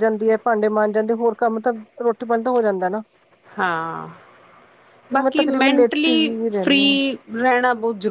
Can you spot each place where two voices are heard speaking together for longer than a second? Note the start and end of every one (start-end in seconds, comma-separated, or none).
5.1-7.0